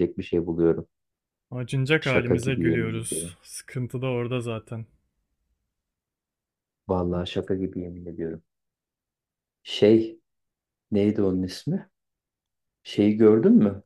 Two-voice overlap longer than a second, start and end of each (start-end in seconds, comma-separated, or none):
2.0-3.4